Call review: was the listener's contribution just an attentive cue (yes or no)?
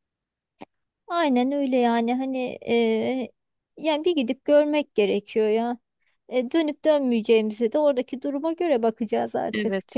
no